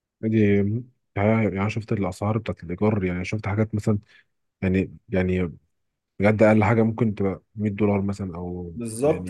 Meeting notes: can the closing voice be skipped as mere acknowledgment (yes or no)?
no